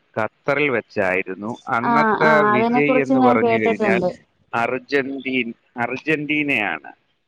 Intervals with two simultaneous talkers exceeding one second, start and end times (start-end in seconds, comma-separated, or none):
1.9-4.0